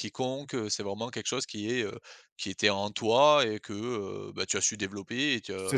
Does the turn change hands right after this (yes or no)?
yes